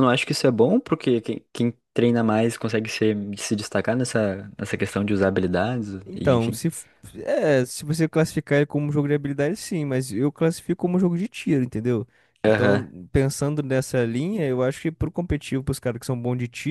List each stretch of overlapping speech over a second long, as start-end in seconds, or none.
none